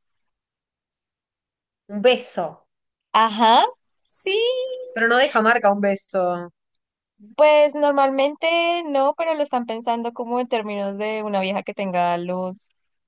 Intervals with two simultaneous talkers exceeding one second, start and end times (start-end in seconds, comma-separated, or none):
none